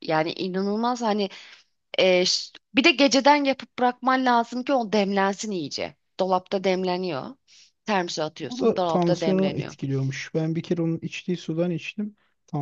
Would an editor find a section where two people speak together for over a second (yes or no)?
yes